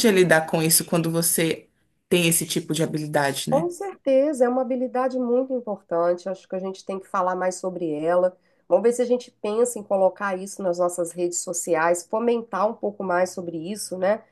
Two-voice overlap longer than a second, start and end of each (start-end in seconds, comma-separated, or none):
none